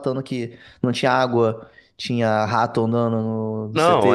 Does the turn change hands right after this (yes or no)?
yes